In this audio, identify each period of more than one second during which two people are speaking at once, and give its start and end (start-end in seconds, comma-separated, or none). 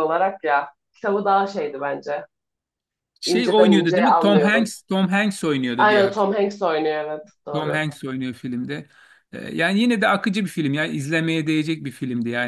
3.3-4.7